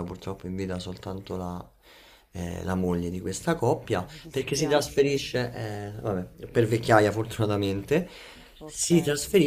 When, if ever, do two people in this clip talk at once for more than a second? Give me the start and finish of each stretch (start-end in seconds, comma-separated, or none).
3.9-5.2